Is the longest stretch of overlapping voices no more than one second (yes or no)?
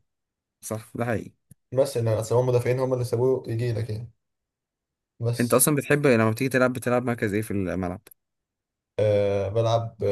yes